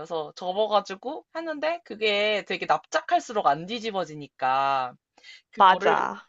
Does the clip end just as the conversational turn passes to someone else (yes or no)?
no